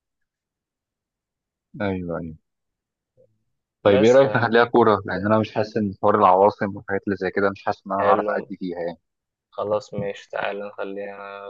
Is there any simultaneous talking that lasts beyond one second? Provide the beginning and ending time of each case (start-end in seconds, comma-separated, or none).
none